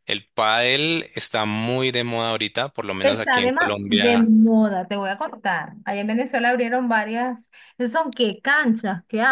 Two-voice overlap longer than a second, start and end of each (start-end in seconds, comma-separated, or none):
3.0-4.3